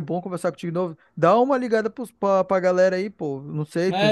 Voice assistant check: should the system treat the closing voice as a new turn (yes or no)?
yes